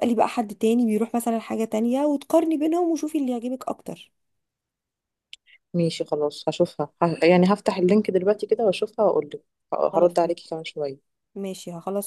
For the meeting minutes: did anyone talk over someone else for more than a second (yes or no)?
no